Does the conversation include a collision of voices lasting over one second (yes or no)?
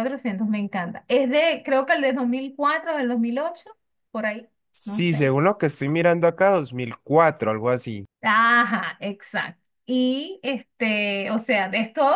no